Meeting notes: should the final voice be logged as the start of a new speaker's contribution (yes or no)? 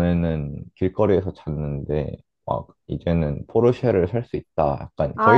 yes